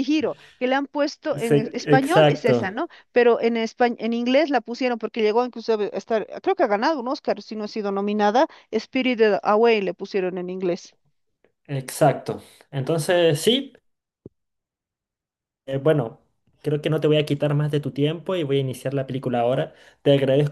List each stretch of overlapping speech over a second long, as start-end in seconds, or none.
1.3-2.8